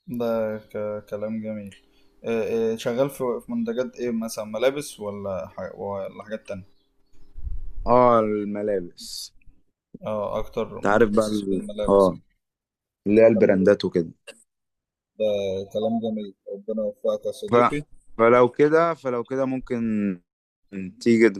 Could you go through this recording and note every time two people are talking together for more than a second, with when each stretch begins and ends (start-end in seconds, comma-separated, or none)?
10.8-12.1